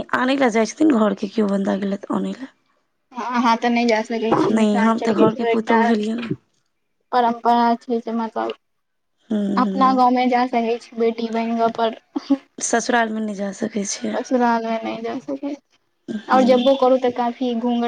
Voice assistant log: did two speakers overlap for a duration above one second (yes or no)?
yes